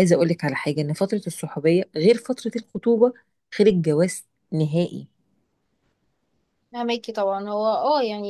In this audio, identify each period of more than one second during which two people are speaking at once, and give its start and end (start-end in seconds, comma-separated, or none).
none